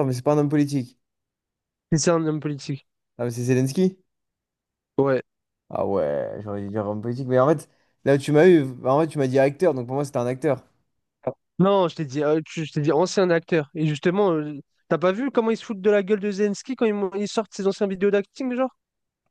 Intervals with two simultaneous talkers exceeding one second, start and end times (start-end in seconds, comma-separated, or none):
none